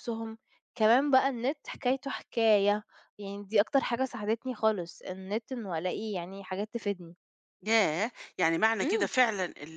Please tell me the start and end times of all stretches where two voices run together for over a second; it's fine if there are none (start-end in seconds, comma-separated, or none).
none